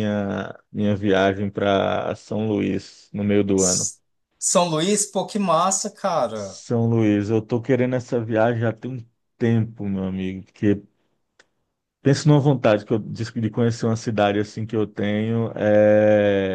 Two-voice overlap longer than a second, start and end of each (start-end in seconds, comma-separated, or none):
none